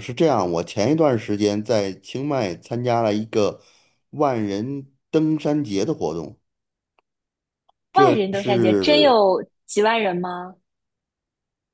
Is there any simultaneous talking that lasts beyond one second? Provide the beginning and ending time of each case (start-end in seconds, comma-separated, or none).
7.9-9.2